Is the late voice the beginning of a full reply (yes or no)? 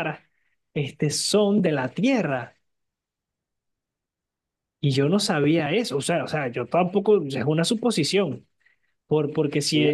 no